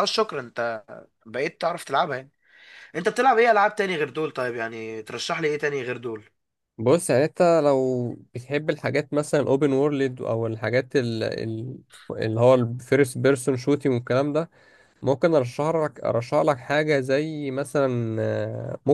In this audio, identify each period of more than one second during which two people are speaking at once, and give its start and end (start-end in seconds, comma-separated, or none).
none